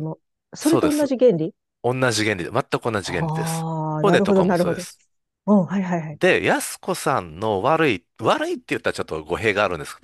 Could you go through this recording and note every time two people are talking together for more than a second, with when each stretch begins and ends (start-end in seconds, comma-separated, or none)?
3.0-4.8